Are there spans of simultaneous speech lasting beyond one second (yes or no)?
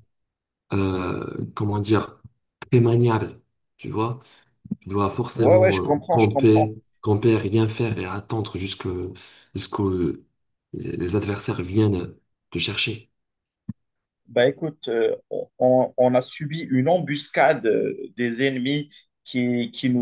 yes